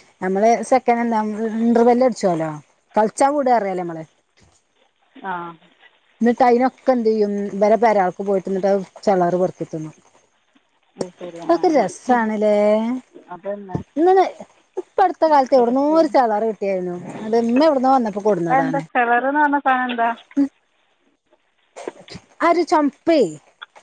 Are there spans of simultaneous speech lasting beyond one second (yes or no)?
no